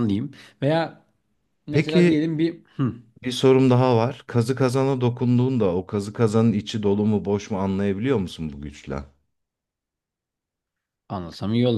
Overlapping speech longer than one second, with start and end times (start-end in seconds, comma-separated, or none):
none